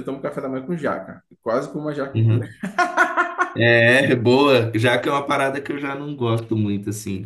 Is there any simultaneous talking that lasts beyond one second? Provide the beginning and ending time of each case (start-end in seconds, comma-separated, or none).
none